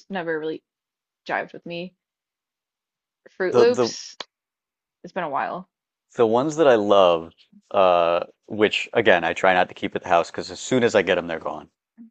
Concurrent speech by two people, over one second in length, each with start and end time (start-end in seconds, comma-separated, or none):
none